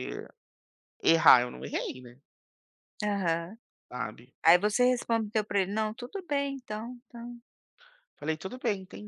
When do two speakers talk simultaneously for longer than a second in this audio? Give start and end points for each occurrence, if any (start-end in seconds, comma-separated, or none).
none